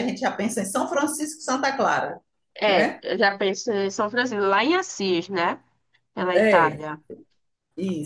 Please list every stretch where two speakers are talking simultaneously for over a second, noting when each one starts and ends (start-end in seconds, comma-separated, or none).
none